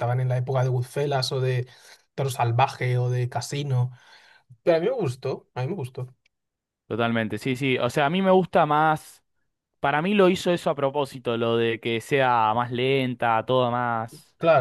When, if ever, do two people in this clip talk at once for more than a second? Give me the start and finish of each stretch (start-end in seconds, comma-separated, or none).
none